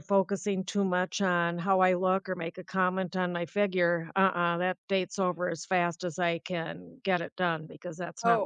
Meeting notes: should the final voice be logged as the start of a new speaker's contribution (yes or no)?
yes